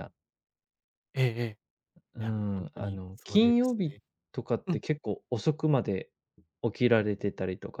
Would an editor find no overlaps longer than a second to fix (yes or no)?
no